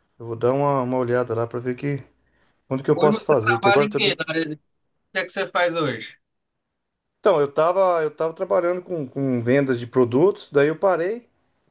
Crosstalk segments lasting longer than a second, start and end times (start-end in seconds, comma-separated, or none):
2.9-4.2